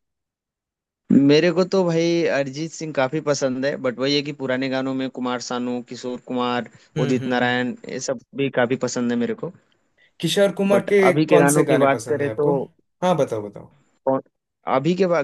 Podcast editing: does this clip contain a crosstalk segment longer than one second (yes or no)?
yes